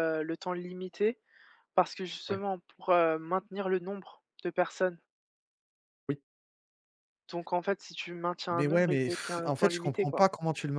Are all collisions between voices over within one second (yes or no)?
no